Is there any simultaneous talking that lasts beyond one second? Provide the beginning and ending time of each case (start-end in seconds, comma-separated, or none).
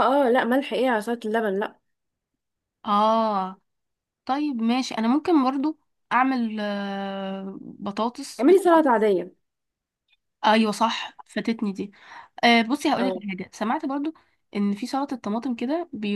none